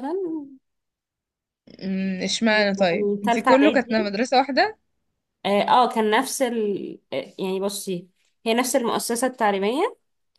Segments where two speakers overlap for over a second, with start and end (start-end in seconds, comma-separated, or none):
2.5-4.1